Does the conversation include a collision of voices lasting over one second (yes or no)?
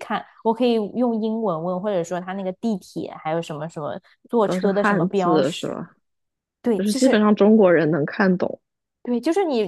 yes